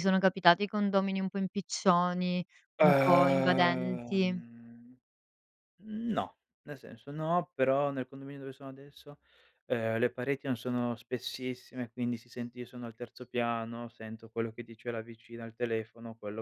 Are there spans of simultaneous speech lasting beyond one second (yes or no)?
yes